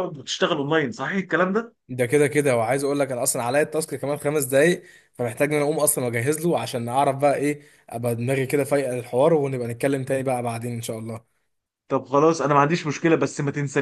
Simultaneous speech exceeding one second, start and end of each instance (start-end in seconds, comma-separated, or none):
none